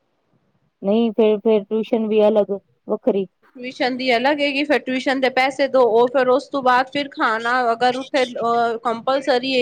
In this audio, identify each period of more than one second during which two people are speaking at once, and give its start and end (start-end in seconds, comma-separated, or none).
none